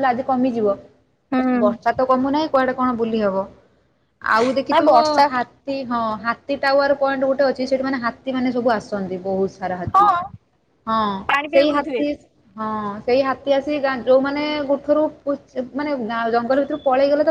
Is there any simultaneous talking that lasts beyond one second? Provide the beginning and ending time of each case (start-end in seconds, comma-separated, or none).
none